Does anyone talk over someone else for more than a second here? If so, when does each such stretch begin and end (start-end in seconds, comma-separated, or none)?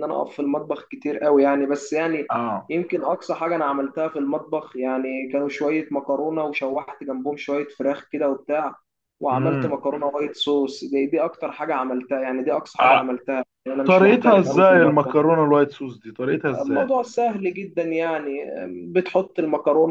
13.8-15.2